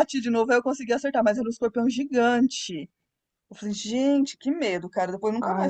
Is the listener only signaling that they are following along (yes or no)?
no